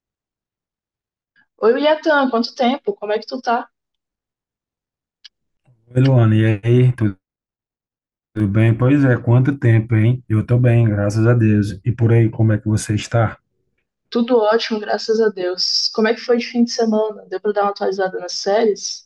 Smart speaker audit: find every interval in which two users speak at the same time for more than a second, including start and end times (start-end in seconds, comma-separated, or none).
none